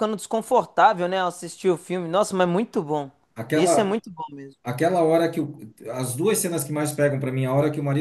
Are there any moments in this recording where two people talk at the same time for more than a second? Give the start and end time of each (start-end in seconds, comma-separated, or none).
none